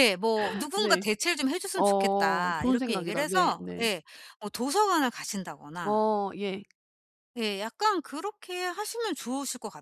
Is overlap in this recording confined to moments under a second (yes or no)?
no